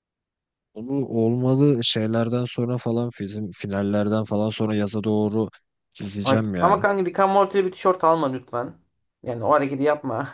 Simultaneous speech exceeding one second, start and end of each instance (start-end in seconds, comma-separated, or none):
none